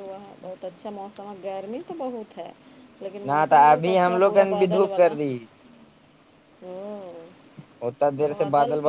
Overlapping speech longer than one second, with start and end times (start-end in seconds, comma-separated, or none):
3.3-5.1